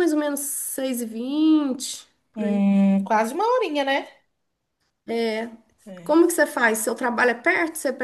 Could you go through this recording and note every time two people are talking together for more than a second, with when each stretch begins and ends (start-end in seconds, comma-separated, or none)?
none